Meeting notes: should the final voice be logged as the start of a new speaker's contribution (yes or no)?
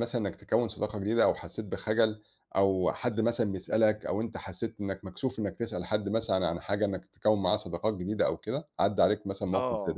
yes